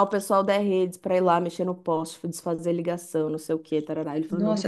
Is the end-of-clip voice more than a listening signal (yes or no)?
yes